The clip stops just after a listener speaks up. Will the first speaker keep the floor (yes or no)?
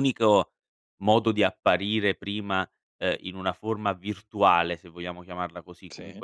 yes